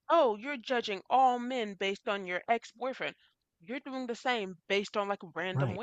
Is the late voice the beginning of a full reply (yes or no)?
no